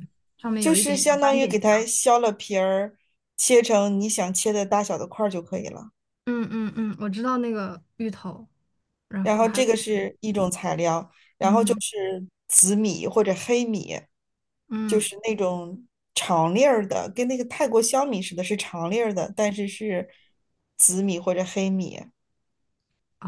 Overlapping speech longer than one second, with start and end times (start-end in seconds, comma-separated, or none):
0.6-1.9